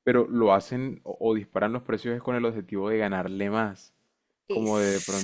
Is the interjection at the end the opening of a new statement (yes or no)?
no